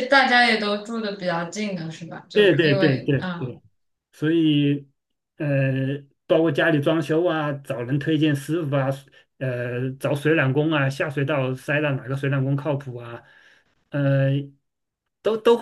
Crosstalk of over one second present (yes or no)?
yes